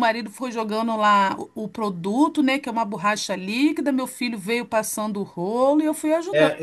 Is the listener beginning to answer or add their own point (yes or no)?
yes